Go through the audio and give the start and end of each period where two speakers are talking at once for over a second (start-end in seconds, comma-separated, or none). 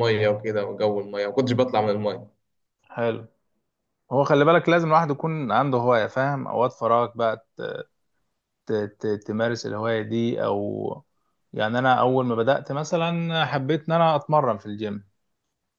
none